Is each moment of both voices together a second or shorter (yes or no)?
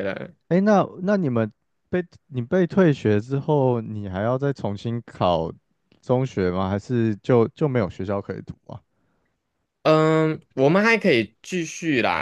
yes